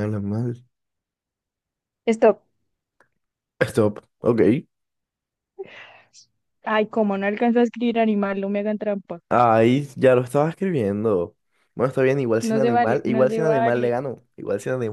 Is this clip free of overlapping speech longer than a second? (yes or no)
no